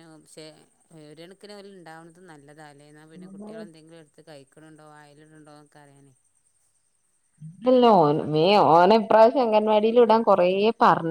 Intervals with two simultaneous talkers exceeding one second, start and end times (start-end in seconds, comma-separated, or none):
none